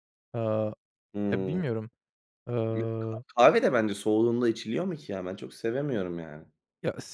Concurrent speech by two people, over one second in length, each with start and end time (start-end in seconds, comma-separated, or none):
none